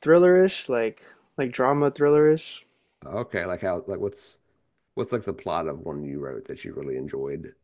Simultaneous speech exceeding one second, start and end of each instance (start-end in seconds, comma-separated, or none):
none